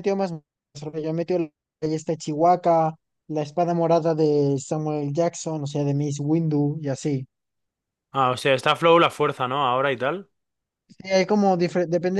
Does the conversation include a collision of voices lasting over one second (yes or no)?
no